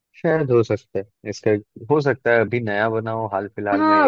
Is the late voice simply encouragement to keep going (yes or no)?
no